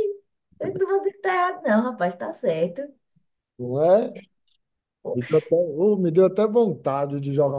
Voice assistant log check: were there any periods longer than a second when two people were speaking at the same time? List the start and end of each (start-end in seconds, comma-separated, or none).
none